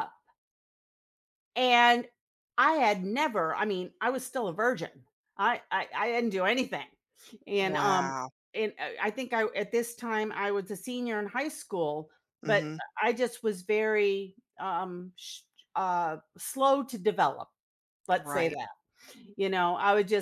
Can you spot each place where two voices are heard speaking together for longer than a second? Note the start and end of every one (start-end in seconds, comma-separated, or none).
none